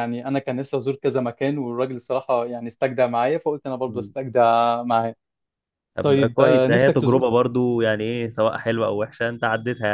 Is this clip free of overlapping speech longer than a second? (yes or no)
no